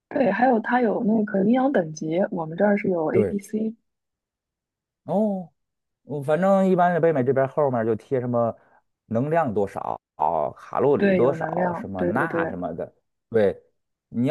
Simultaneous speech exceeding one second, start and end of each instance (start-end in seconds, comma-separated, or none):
11.0-12.5